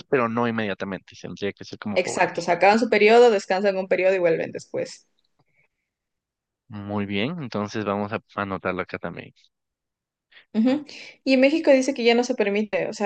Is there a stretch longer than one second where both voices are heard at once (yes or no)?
no